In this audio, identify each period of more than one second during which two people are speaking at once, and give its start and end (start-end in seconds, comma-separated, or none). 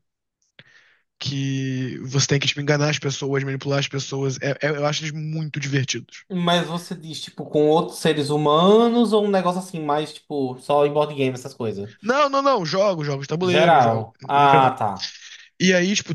13.5-14.8